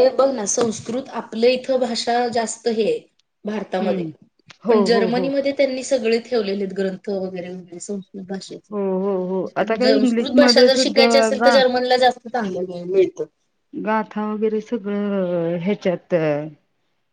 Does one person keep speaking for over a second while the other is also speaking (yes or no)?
yes